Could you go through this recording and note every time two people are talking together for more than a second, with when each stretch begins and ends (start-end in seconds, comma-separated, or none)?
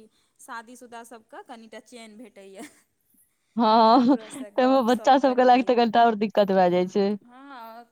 4.0-5.8